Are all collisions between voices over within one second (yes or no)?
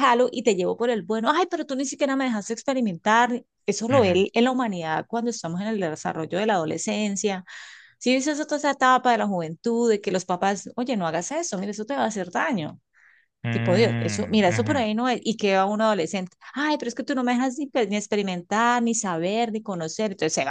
no